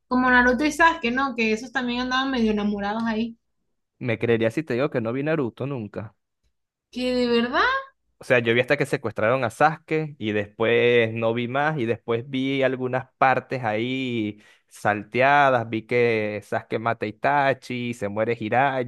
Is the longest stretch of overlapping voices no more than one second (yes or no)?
yes